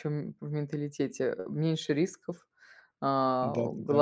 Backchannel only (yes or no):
yes